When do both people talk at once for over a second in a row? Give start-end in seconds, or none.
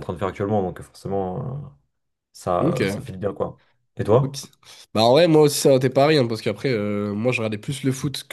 none